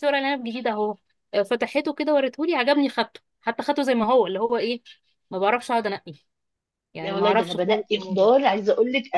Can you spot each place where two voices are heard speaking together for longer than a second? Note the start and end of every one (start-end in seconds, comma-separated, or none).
7.0-8.3